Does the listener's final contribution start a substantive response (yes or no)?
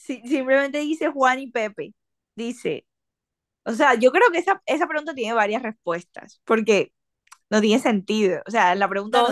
yes